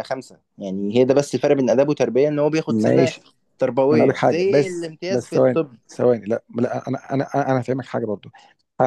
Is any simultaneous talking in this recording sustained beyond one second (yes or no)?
yes